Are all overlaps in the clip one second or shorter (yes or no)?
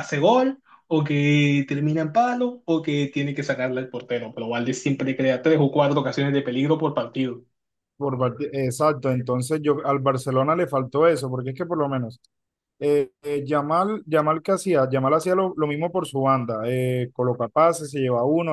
yes